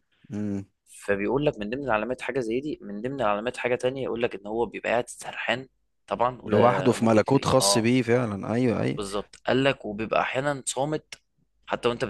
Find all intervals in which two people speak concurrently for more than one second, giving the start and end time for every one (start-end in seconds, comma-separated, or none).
6.4-7.9